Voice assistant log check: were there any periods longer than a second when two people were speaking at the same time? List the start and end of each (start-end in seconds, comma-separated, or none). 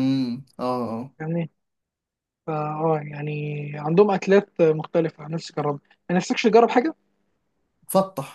none